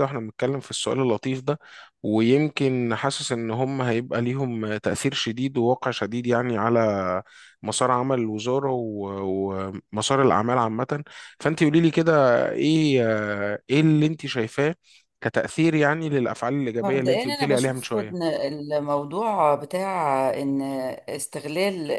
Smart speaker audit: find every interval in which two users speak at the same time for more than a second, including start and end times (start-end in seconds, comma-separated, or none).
16.8-18.2